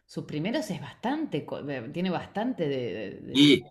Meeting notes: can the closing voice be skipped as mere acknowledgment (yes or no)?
no